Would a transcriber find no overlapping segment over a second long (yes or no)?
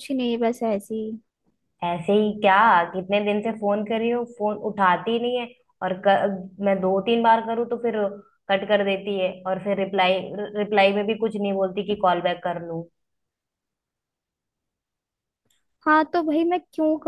yes